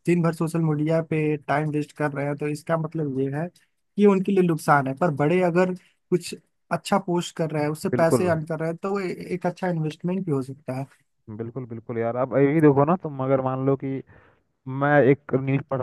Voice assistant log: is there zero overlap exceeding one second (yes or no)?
yes